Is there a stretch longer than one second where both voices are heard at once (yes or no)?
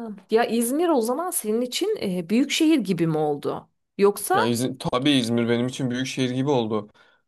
no